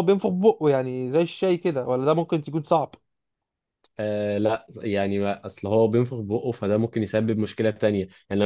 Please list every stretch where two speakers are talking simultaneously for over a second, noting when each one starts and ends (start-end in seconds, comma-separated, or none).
none